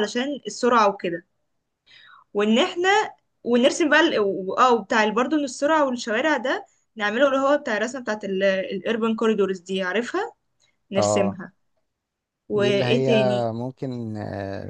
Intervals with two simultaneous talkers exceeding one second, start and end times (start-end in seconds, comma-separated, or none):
none